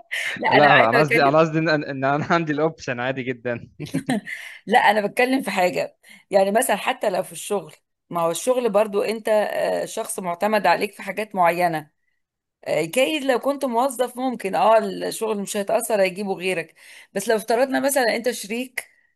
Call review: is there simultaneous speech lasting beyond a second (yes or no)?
no